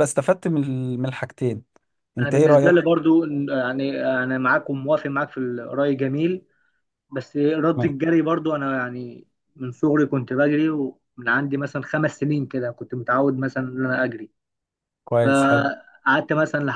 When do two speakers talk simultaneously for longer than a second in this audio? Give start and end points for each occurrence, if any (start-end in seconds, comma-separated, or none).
none